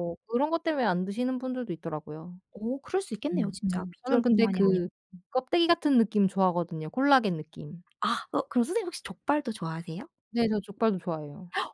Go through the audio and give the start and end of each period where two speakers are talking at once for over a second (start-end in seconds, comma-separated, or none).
3.3-4.9